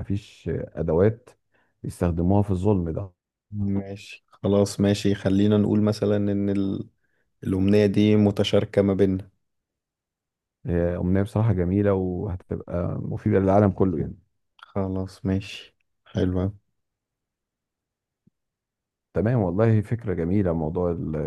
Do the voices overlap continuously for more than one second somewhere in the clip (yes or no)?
no